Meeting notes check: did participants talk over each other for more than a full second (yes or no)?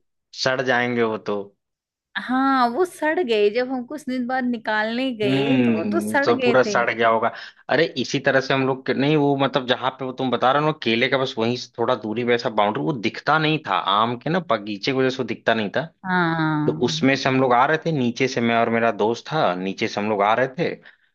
yes